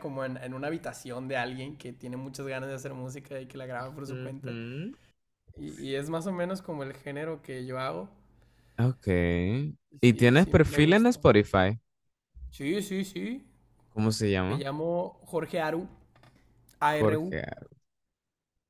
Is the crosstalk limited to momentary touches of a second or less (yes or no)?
no